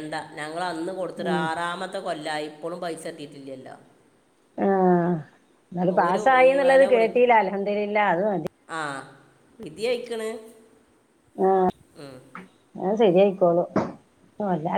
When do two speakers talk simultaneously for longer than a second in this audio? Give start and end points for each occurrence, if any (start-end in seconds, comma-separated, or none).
none